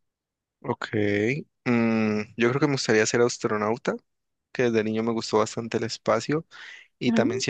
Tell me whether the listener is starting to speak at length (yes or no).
no